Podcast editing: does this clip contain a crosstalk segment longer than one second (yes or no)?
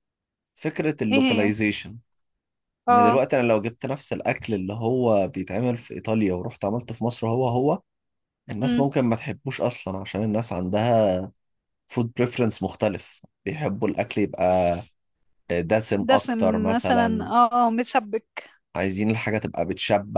yes